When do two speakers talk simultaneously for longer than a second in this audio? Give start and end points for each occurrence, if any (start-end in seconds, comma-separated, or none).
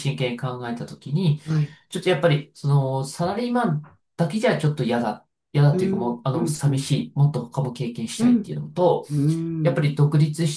5.7-7.0